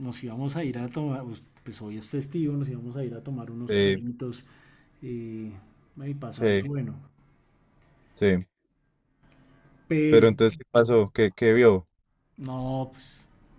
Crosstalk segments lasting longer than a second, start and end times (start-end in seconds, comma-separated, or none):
none